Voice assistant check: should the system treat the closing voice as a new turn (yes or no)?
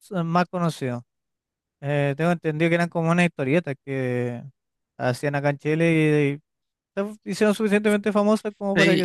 yes